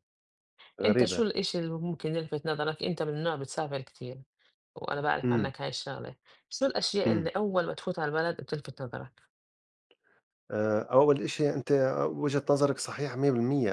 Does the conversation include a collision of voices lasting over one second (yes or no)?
no